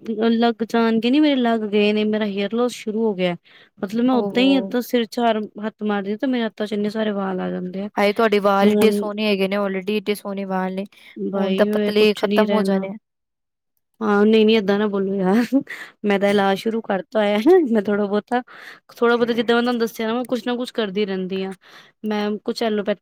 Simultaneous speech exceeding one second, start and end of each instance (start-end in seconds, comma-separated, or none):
11.4-12.9